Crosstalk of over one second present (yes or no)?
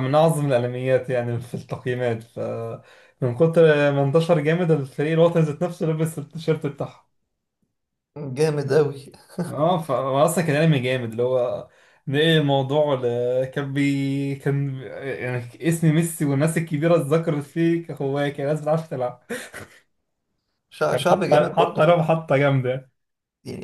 yes